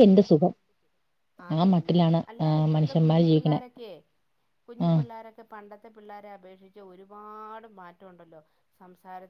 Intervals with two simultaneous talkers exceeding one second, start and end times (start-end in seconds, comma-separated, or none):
1.6-3.6